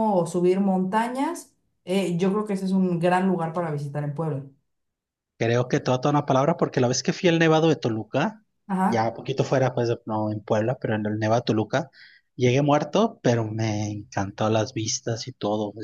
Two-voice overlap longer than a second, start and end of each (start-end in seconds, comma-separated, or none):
none